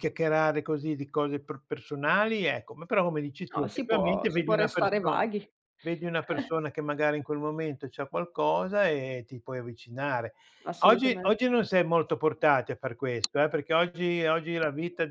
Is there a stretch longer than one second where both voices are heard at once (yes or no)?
yes